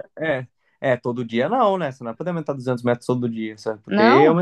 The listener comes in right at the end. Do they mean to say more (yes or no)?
no